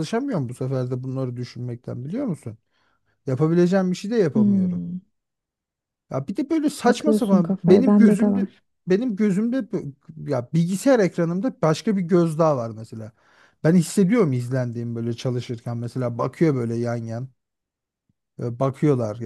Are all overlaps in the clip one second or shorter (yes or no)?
no